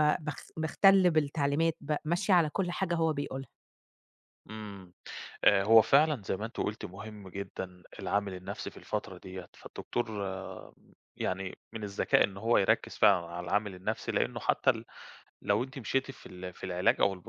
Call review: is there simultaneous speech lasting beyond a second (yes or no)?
no